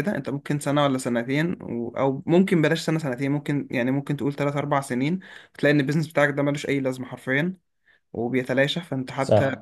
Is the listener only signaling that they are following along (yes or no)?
no